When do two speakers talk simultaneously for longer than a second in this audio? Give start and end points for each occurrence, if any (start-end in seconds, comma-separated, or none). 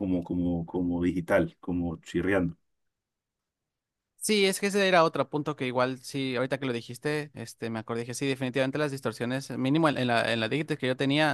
none